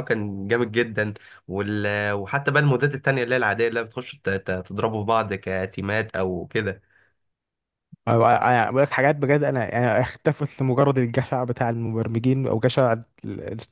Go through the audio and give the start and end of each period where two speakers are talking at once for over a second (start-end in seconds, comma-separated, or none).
none